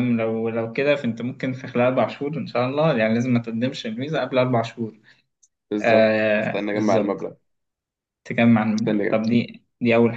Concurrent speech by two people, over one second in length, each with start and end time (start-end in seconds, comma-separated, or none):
5.8-7.2